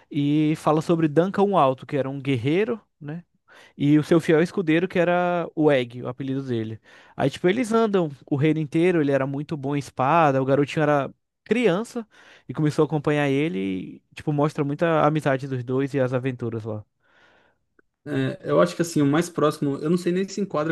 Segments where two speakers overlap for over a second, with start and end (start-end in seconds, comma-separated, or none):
none